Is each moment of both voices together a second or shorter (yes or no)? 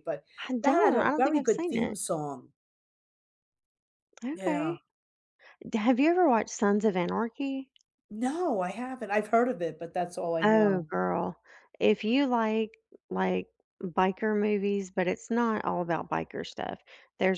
no